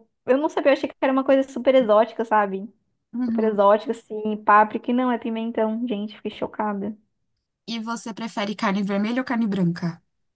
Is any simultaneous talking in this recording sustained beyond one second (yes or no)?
no